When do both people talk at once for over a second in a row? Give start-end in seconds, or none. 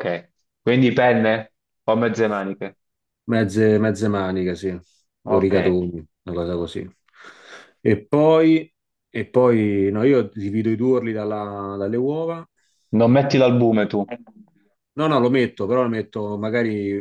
none